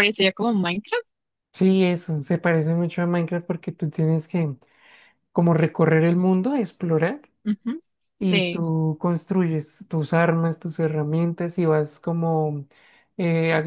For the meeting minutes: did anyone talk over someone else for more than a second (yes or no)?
no